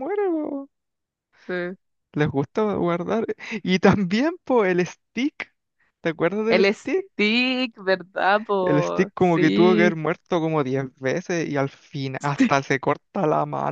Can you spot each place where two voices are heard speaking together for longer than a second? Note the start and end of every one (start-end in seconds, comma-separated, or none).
8.6-10.0